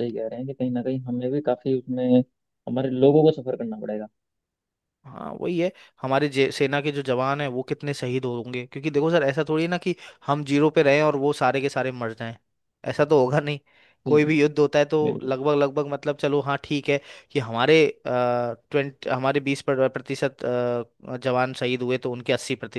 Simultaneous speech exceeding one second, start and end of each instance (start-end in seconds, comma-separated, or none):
none